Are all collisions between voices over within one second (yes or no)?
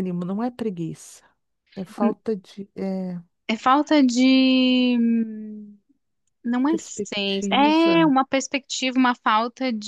no